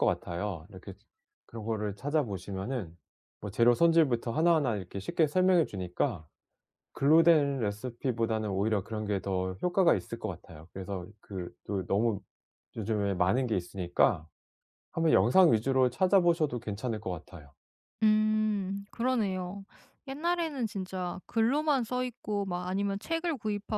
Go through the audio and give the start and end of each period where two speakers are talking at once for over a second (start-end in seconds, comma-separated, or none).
none